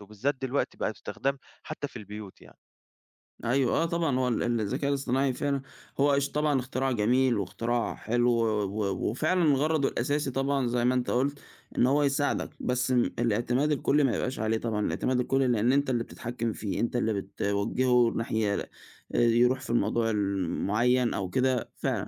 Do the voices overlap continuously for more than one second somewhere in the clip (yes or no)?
no